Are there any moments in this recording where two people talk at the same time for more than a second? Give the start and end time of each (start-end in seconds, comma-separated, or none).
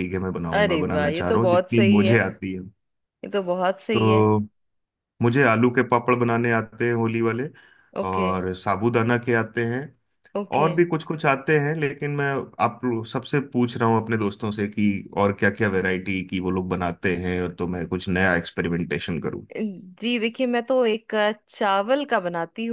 0.5-2.2